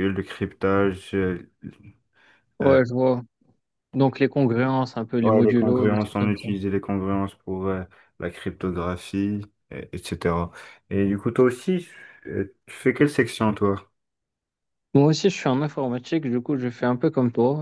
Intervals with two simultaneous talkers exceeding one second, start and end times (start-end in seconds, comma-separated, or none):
5.2-6.5